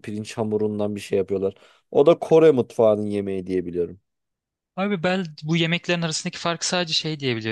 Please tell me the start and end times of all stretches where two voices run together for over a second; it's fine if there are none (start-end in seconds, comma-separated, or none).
none